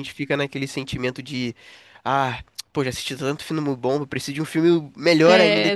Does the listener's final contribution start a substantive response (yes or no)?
yes